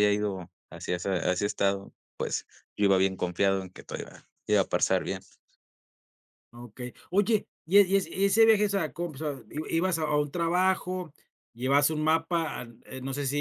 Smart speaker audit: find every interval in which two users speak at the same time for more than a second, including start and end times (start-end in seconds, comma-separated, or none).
none